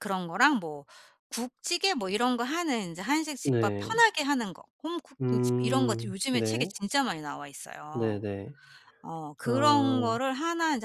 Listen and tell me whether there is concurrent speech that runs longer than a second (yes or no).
yes